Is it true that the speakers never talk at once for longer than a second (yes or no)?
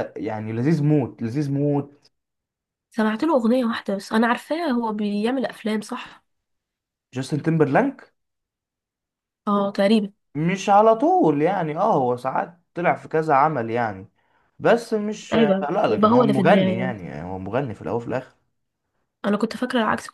no